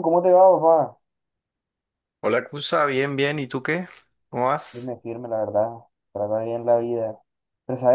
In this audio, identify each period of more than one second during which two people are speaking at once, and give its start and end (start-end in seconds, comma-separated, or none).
none